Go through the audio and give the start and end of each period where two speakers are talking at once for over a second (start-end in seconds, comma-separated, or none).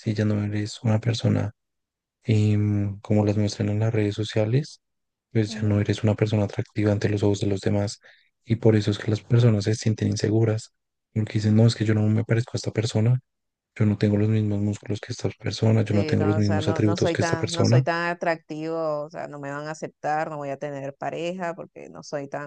15.9-17.9